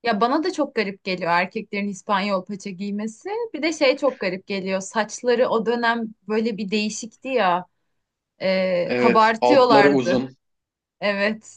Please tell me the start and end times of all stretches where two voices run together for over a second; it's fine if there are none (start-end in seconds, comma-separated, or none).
8.8-10.2